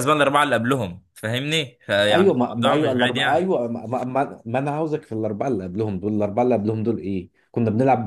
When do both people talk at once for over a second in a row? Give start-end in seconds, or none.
2.1-3.5